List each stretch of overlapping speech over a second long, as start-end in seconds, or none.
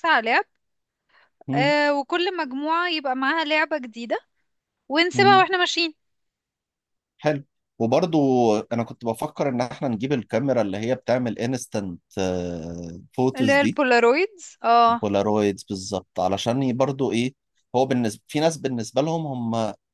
none